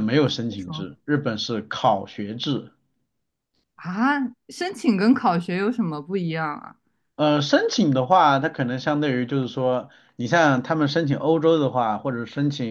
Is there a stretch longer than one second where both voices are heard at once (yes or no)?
no